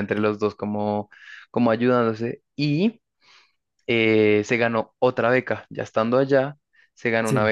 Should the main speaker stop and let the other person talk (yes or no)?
no